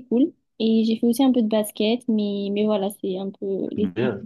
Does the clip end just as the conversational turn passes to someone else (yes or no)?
yes